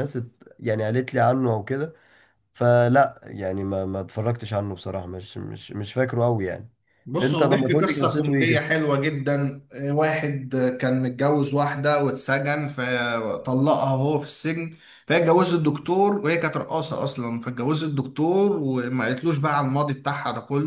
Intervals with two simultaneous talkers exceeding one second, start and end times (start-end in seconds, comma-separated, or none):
7.2-8.7